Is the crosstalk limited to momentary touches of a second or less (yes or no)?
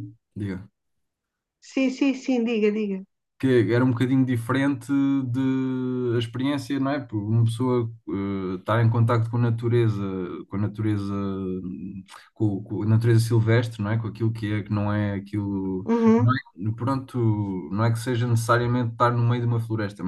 yes